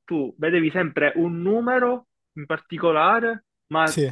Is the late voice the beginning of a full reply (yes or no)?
no